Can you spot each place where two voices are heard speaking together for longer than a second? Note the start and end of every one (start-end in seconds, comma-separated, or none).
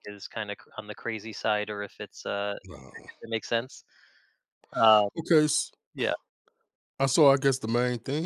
none